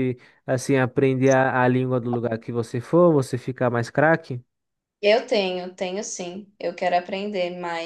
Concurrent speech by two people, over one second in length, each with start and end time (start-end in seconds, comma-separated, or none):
none